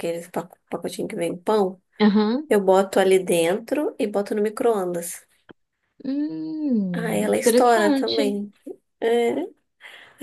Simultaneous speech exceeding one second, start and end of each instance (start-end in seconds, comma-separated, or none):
6.9-8.4